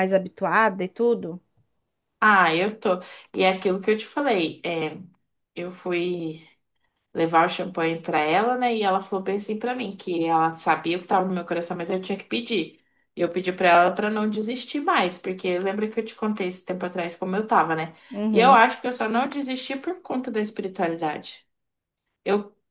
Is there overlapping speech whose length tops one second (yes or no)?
no